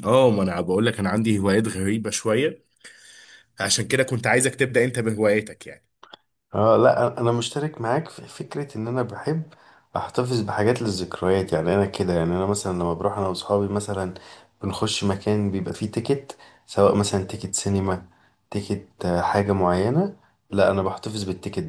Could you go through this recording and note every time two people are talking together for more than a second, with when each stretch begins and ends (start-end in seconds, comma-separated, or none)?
none